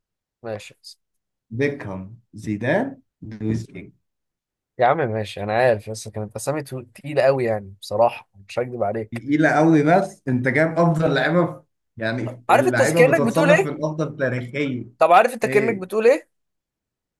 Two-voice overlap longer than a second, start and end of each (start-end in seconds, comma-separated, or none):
12.5-13.8